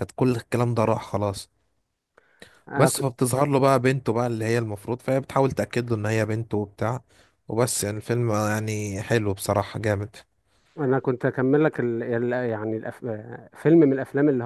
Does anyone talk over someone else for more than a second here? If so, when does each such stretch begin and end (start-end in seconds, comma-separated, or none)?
none